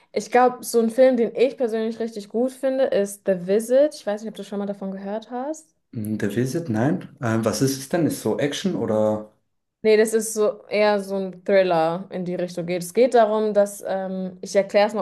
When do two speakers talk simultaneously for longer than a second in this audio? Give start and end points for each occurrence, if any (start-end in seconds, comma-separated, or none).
none